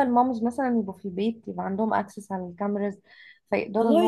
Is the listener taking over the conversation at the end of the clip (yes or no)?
yes